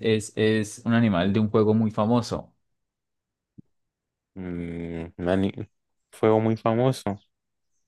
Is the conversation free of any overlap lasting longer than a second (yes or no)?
yes